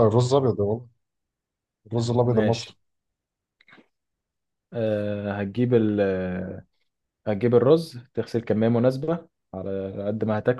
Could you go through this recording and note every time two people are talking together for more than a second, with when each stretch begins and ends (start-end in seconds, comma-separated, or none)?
none